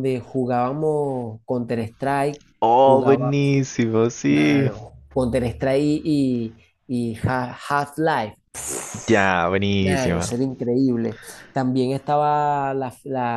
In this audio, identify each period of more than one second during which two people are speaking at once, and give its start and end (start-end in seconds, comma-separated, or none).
none